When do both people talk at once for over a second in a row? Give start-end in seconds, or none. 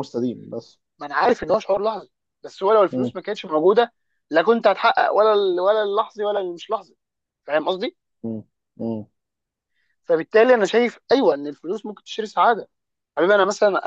none